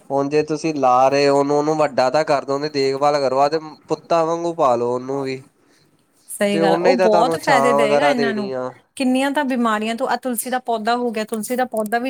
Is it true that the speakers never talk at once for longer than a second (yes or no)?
no